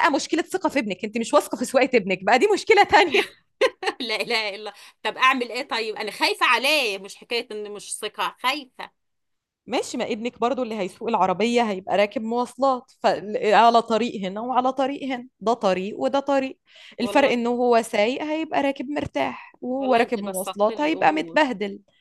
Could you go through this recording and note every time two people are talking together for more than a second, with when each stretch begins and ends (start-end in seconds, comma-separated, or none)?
19.8-21.4